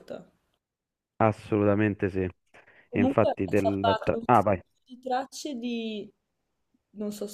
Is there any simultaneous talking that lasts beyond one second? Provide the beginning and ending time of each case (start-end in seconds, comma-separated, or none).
2.9-4.5